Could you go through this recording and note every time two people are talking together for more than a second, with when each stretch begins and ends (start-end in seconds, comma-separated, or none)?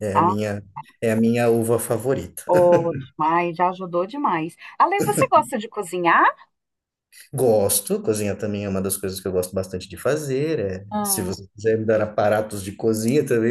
none